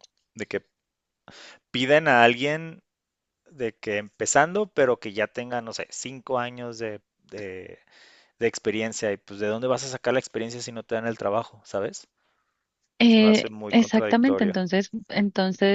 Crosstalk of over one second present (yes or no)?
yes